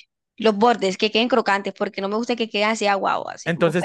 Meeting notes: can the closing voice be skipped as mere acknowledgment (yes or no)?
no